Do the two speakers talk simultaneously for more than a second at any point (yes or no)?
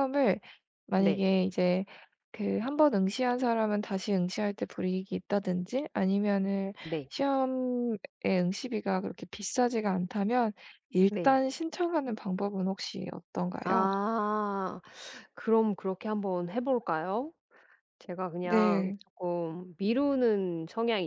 no